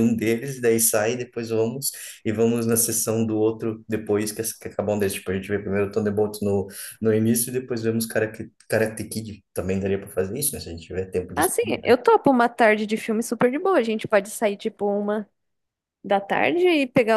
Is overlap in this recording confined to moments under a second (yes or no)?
yes